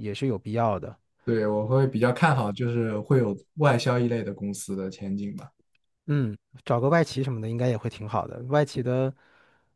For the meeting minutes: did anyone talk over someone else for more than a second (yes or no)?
no